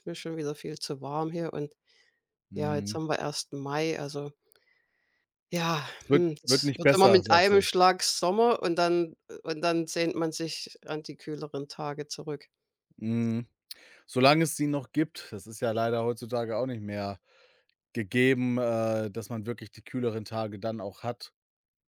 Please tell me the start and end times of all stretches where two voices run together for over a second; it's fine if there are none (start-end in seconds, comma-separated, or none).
6.0-7.7